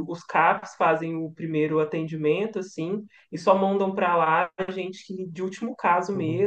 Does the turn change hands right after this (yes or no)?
yes